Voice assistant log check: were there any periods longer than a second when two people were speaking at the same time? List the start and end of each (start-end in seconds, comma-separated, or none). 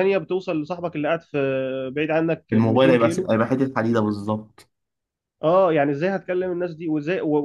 2.5-4.2